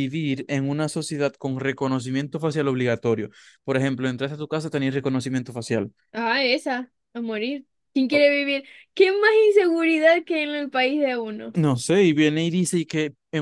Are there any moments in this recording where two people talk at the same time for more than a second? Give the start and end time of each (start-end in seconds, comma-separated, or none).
none